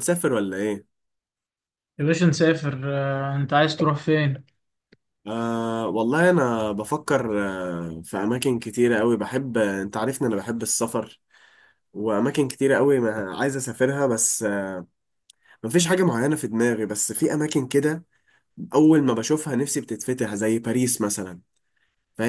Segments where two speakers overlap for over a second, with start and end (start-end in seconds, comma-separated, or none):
none